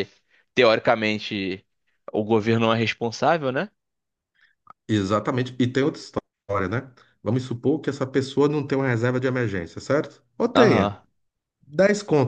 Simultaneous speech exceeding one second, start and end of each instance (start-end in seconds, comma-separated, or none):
none